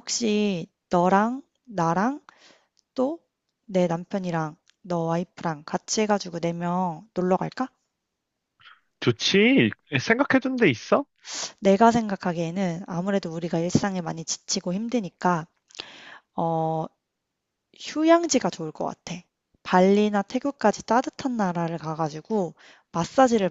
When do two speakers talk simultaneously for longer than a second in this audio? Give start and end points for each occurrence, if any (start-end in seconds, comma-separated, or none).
none